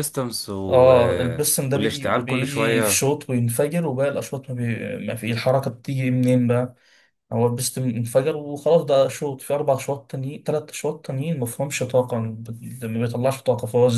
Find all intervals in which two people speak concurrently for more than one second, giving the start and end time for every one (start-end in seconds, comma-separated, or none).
1.7-3.0